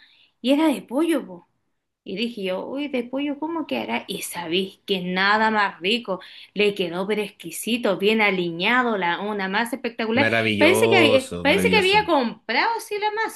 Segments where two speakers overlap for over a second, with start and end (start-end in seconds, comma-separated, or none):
10.2-12.0